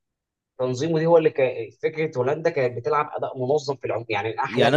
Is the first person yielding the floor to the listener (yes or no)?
yes